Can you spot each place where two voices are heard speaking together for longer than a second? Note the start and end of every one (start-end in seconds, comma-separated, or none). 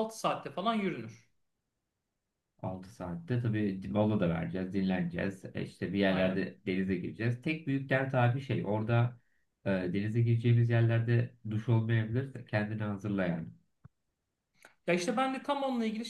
none